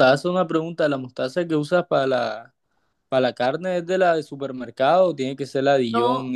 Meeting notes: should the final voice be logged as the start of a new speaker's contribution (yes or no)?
no